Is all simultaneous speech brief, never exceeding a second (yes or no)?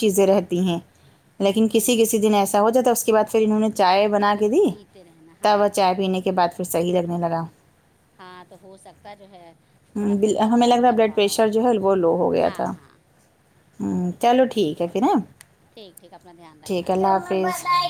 no